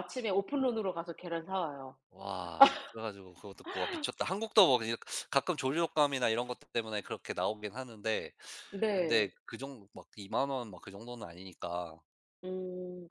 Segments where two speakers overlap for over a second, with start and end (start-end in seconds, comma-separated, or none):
none